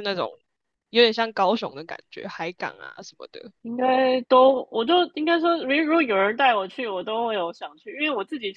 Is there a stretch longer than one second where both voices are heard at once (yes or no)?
no